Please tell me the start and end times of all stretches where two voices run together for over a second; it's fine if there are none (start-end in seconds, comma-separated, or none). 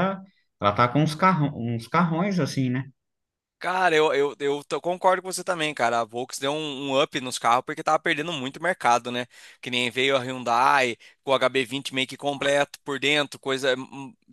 none